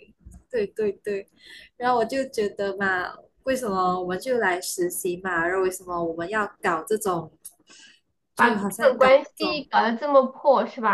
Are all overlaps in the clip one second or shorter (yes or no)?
no